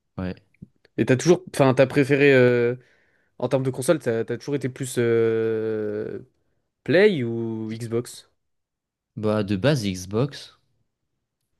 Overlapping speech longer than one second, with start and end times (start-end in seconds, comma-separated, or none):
none